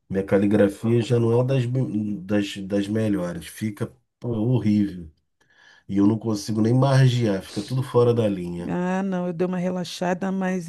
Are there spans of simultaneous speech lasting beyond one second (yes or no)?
no